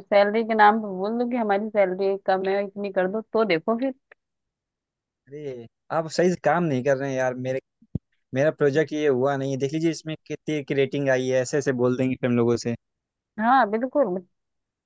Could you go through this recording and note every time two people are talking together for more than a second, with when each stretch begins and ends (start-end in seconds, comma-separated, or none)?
none